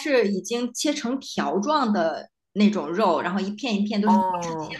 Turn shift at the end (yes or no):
no